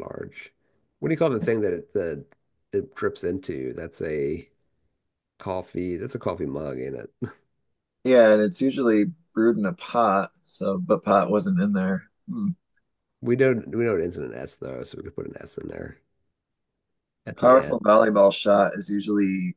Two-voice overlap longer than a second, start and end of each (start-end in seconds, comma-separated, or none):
none